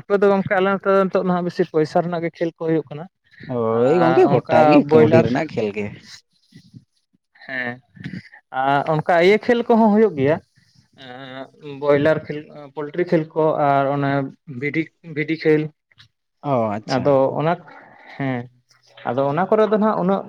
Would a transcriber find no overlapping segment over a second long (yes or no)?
no